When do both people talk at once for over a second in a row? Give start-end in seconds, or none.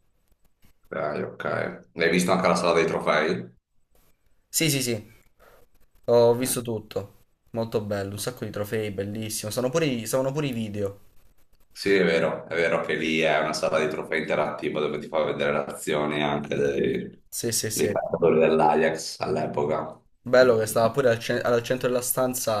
none